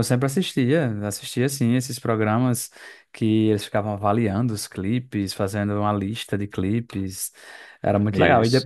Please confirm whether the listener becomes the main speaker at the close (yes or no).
no